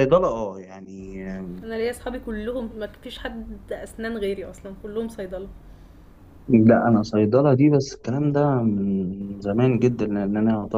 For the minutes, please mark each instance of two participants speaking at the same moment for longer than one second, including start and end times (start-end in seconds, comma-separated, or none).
none